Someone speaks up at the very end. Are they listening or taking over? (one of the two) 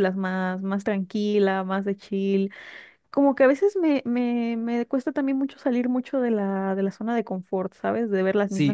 taking over